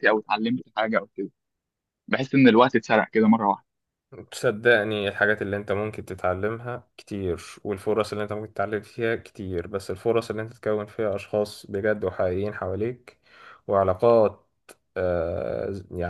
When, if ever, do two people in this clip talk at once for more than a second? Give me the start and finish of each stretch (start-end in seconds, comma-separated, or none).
none